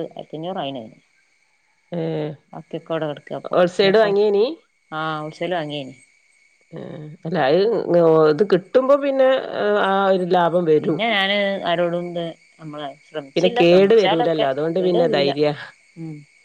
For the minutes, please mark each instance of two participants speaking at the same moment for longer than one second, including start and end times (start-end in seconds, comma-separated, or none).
13.3-15.3